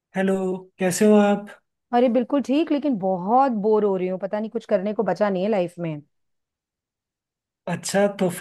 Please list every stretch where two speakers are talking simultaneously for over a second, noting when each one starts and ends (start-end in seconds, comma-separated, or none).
none